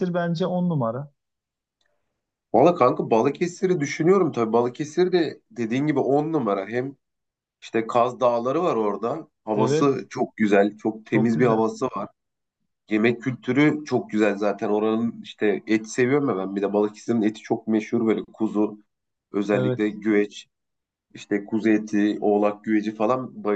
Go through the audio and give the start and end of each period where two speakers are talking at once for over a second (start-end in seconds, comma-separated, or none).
none